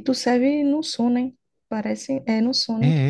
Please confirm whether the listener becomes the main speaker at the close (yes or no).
yes